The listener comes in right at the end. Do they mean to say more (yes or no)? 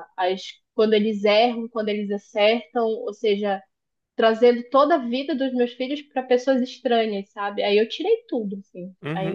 yes